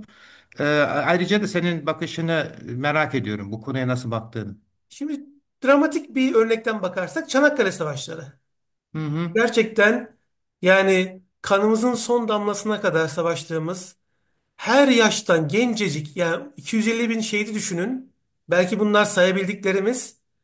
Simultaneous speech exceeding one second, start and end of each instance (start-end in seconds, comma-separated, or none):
none